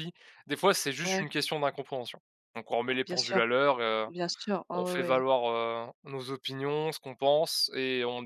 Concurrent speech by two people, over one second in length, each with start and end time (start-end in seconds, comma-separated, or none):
none